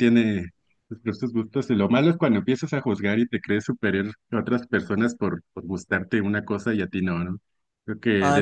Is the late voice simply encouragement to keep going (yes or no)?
no